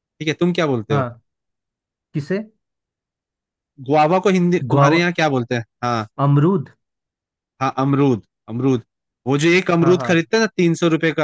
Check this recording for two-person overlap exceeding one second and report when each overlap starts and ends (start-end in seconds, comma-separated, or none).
none